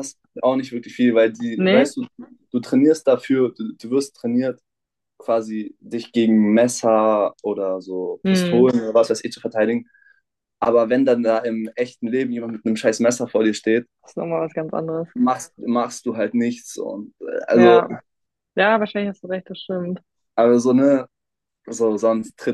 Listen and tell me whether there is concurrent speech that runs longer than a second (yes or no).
no